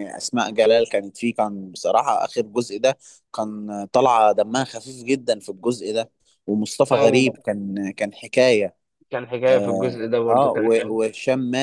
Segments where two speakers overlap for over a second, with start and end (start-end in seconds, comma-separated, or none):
9.5-11.0